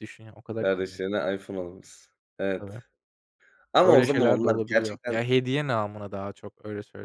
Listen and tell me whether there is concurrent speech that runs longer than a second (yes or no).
yes